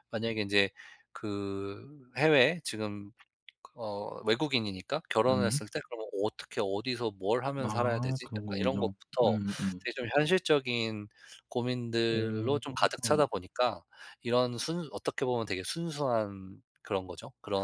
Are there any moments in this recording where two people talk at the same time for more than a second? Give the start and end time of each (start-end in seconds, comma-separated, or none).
7.6-9.4